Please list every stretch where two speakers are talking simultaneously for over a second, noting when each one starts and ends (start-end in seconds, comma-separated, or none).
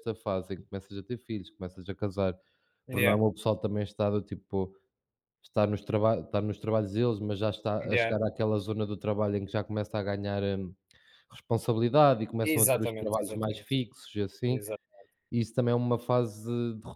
12.4-13.7